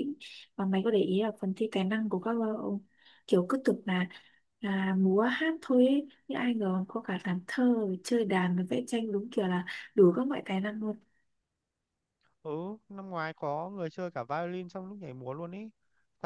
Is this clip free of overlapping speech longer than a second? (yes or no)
yes